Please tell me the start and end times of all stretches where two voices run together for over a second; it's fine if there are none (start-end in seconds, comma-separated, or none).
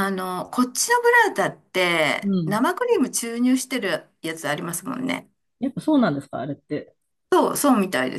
none